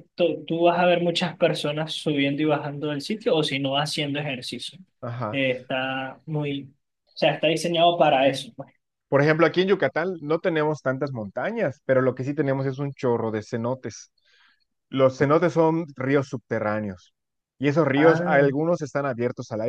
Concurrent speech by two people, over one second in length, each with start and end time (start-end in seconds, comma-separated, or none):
none